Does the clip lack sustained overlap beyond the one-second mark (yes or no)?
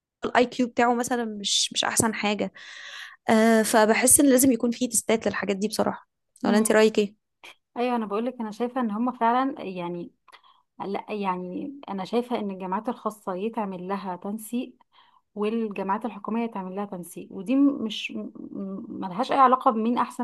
yes